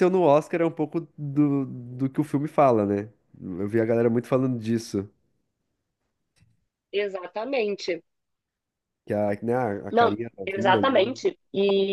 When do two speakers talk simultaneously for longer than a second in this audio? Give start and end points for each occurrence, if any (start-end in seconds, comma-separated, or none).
9.9-11.2